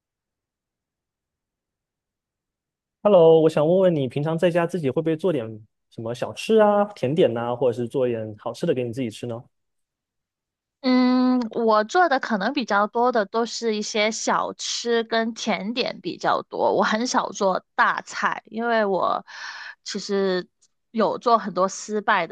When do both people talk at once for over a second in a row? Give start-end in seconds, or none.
none